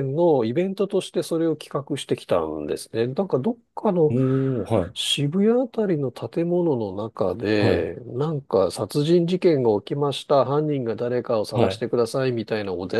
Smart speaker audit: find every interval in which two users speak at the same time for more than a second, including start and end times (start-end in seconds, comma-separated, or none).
none